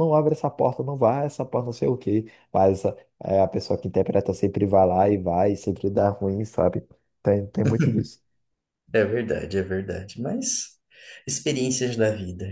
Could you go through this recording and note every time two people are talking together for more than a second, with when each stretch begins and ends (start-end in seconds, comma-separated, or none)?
none